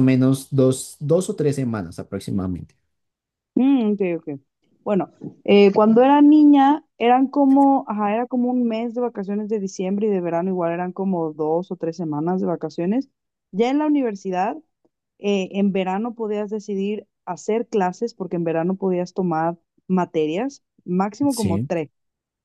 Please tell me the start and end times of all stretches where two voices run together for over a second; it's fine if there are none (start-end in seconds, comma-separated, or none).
none